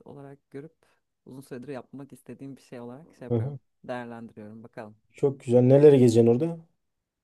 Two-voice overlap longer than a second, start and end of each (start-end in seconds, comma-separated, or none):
none